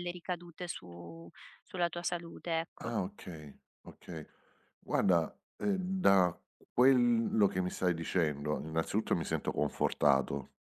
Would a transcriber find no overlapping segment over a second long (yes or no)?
yes